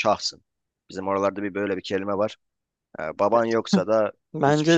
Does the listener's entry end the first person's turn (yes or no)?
yes